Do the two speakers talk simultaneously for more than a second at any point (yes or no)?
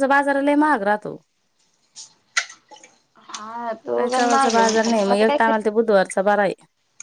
yes